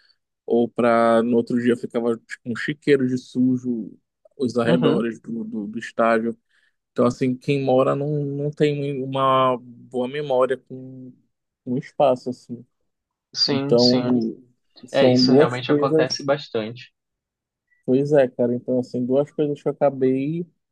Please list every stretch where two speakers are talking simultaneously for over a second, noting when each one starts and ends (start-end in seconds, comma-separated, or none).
14.9-16.3